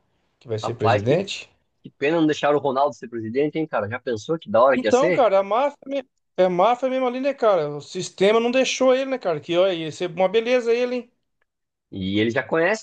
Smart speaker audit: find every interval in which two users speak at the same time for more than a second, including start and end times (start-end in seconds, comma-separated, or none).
none